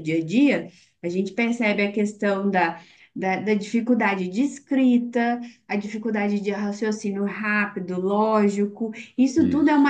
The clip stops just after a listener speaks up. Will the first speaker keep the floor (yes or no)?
yes